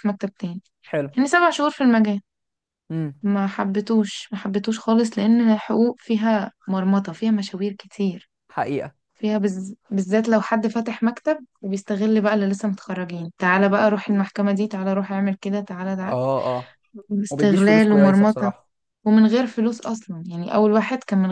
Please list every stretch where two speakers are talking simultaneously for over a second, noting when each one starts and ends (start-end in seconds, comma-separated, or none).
17.3-18.5